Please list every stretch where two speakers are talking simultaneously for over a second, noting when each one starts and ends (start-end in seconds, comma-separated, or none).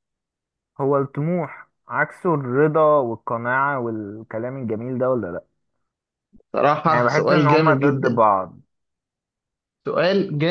6.9-8.2